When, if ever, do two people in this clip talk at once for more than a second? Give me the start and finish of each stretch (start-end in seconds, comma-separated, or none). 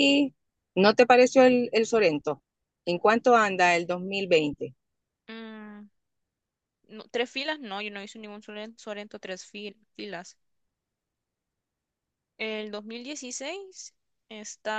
none